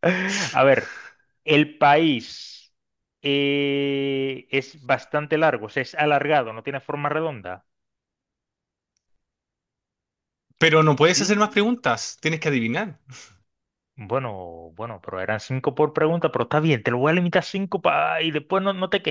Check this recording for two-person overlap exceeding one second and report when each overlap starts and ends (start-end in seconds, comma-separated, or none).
none